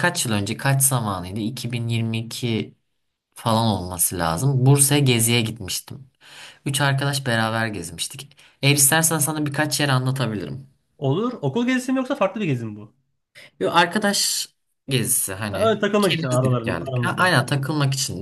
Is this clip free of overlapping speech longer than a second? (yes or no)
no